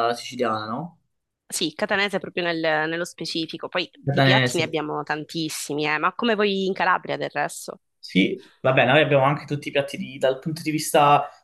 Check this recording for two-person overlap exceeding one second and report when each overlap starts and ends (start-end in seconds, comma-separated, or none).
none